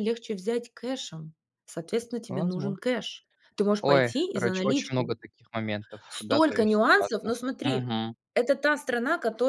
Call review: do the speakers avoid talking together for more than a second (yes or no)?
no